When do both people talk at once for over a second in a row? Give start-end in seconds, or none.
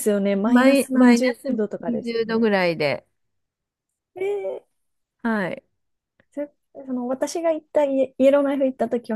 0.5-2.5